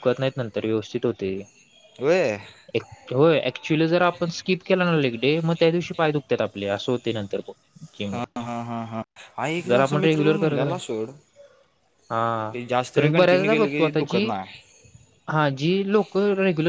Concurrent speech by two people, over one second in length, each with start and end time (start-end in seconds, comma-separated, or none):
12.9-14.2